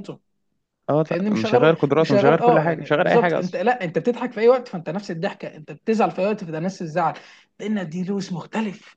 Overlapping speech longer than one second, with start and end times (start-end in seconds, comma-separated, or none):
1.1-3.6